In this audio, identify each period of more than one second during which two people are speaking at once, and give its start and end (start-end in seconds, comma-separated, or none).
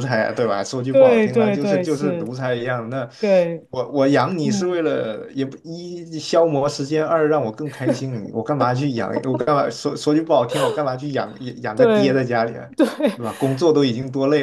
0.9-2.4